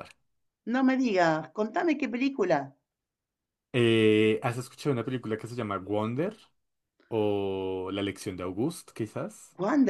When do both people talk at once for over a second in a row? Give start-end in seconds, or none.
none